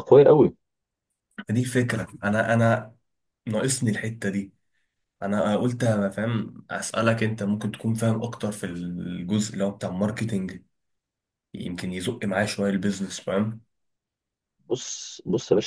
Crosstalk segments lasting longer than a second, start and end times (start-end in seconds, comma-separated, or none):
none